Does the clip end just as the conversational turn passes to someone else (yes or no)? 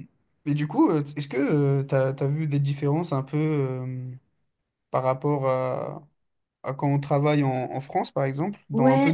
yes